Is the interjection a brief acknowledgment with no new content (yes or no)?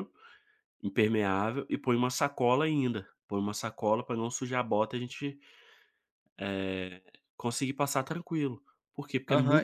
no